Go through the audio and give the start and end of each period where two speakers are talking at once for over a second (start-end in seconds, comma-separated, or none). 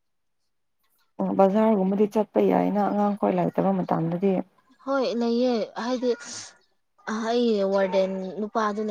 none